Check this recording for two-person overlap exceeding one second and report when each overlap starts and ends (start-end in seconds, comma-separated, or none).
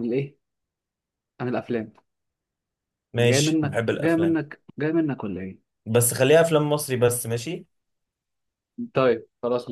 3.1-4.4